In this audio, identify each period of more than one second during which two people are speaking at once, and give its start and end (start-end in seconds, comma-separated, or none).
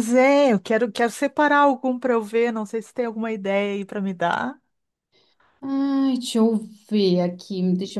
none